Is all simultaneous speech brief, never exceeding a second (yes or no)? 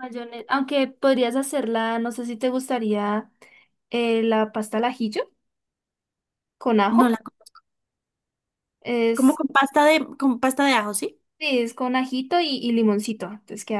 yes